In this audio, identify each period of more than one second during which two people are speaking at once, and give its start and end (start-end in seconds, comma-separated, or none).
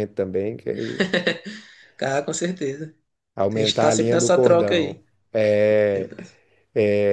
3.5-5.0